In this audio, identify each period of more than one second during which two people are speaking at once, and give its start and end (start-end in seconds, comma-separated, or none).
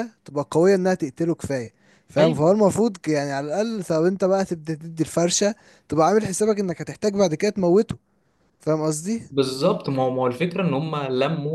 none